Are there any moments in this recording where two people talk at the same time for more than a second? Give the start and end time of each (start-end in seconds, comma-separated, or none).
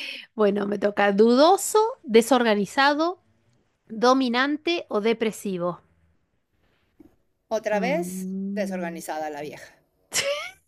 7.7-9.0